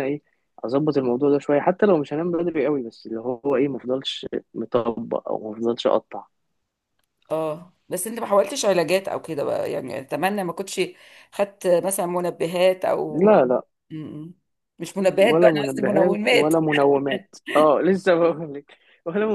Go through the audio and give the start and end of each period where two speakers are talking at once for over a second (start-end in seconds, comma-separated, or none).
15.0-16.6